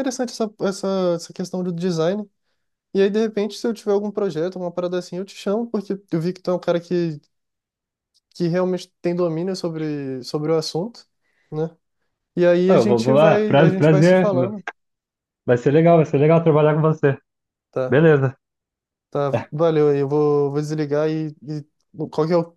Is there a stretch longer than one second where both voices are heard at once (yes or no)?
yes